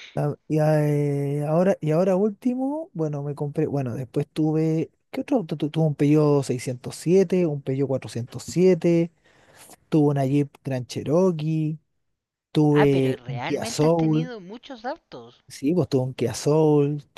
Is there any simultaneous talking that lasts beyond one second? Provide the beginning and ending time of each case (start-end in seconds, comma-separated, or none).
12.7-14.3